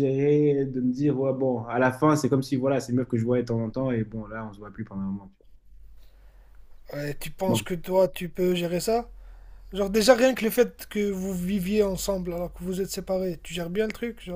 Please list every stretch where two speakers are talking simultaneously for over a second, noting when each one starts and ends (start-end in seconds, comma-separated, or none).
none